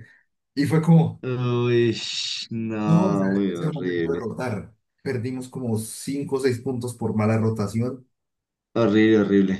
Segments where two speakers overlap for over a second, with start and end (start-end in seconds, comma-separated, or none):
2.8-4.2